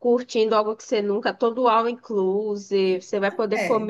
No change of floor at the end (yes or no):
yes